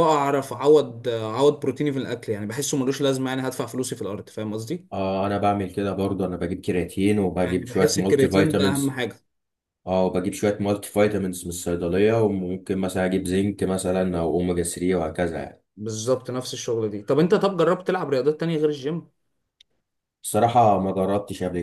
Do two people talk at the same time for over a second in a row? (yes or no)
yes